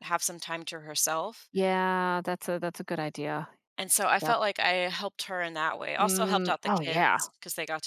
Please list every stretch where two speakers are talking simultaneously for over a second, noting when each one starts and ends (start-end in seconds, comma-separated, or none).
6.0-7.2